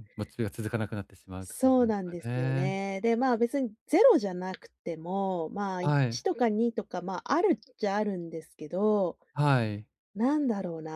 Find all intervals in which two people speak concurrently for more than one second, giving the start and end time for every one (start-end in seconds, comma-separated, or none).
1.4-2.8